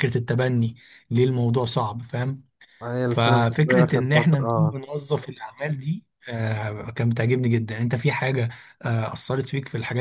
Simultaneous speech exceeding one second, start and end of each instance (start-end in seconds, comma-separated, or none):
3.1-4.8